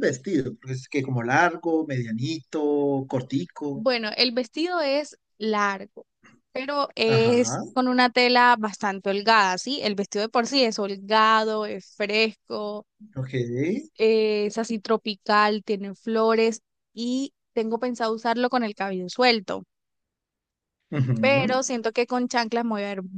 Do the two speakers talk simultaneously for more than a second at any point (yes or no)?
no